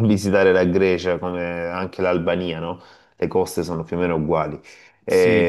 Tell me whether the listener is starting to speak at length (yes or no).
yes